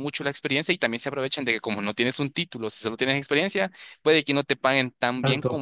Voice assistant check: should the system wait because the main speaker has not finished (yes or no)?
yes